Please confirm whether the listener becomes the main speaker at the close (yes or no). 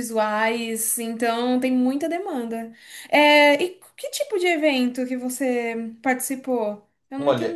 yes